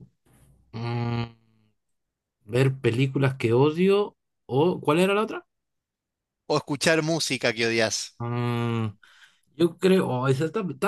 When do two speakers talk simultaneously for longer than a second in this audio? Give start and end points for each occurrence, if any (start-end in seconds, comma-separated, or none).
none